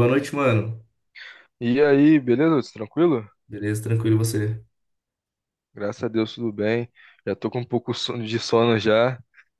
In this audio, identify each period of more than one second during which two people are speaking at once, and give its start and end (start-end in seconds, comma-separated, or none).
none